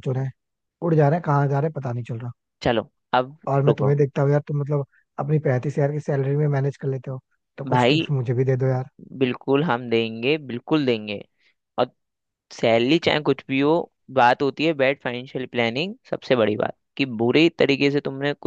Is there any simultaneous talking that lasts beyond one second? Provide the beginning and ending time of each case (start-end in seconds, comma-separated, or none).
none